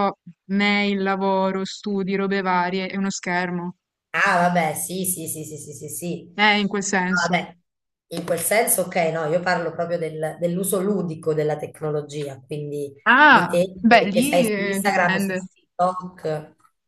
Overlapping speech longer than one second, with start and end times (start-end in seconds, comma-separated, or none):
13.1-15.4